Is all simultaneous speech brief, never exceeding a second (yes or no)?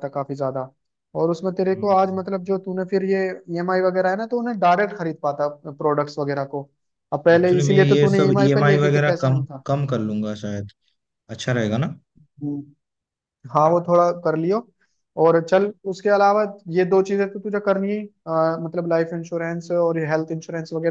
no